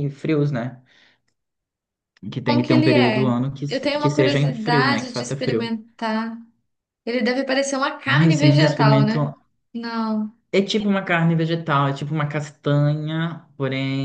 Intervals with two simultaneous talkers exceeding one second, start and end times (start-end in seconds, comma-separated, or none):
2.4-5.7, 8.1-9.3